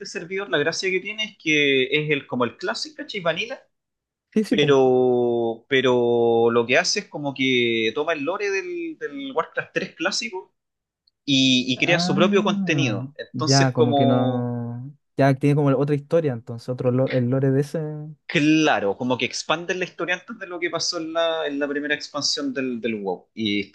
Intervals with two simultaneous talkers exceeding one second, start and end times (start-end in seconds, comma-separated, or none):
11.8-14.5